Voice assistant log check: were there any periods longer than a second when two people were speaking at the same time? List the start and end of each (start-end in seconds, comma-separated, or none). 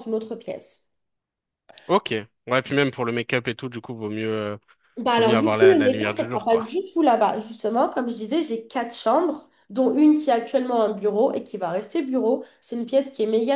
5.2-6.7